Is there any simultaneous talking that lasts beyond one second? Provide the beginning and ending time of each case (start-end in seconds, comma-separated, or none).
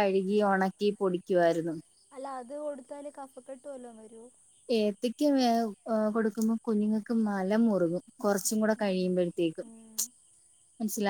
none